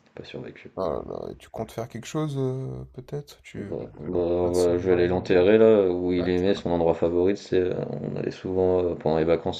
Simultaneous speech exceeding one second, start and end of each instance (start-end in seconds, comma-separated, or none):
3.5-5.4